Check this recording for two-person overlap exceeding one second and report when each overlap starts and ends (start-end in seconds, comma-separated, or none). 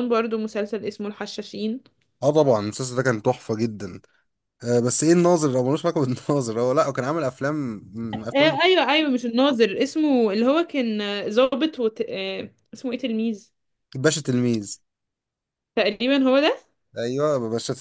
none